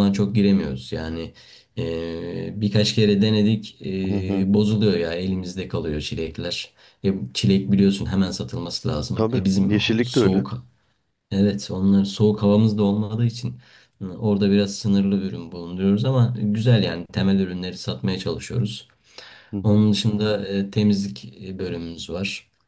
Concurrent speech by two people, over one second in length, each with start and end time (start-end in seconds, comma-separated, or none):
9.1-10.4